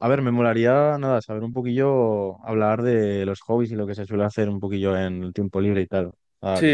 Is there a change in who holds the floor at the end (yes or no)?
yes